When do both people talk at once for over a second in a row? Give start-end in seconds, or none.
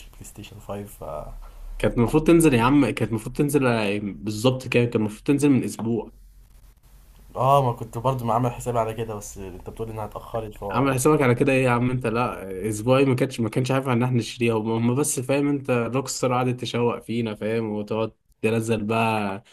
none